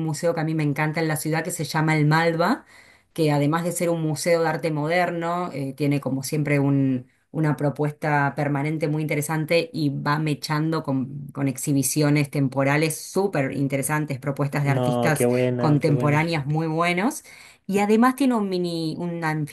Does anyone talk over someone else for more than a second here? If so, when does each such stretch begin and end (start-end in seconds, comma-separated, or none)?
14.6-16.3